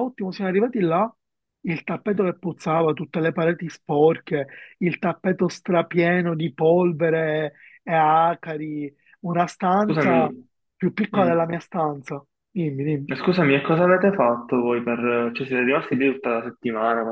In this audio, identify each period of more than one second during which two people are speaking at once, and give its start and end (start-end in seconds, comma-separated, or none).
none